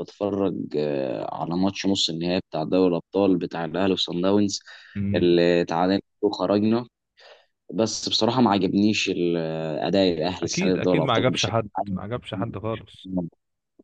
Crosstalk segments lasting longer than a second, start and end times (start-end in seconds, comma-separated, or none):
10.4-12.0